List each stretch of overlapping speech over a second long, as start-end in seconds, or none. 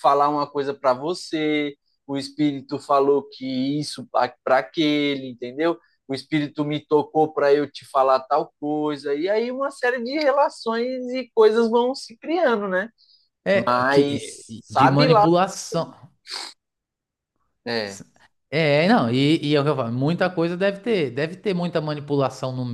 13.5-15.2